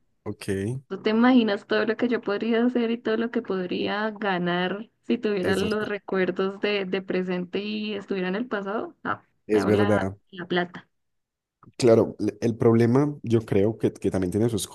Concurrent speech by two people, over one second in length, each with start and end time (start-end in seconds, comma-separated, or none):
none